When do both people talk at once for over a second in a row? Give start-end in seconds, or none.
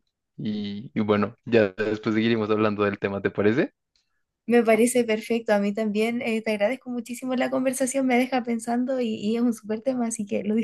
none